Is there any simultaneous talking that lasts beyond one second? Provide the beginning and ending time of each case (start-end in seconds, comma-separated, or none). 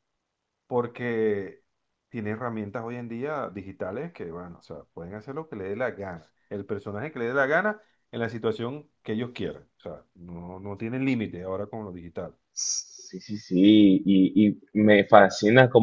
none